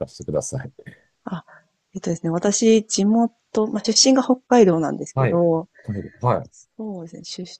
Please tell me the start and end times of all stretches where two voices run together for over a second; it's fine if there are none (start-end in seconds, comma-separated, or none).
none